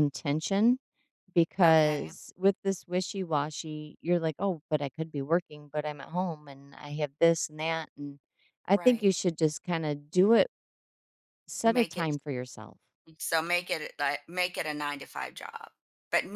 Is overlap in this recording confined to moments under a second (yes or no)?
yes